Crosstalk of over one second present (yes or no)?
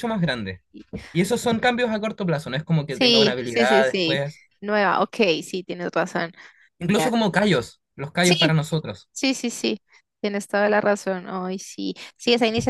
yes